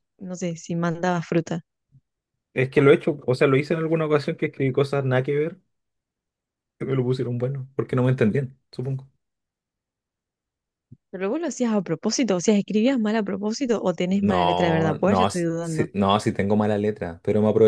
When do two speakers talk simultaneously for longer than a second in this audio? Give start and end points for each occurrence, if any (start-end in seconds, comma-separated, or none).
14.2-15.8